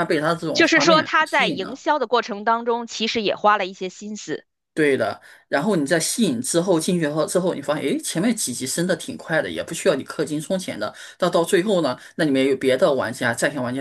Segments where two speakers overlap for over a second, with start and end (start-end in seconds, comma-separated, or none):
0.5-1.8